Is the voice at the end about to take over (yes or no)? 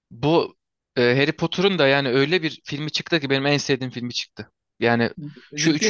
no